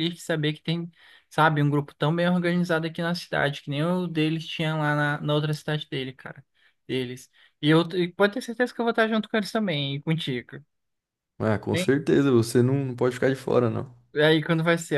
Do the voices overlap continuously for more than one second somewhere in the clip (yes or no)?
no